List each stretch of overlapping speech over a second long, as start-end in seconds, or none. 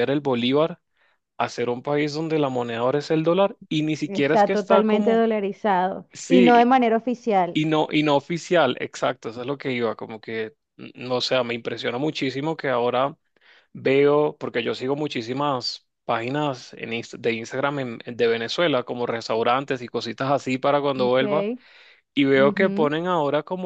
4.1-5.3